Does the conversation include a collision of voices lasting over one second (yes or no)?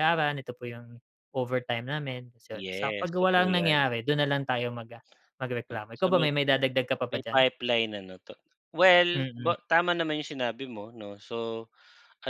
yes